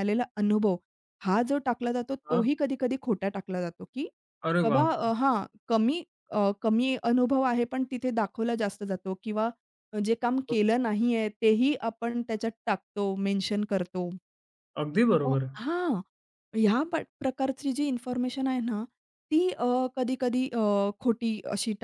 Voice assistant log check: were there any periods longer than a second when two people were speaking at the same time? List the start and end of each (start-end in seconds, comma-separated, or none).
none